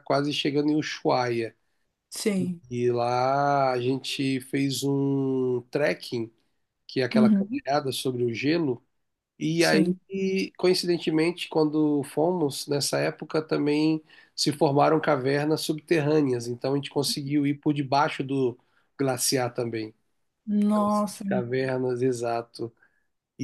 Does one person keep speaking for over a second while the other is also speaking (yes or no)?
no